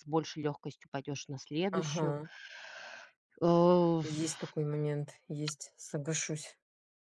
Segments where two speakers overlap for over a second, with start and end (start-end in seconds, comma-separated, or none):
none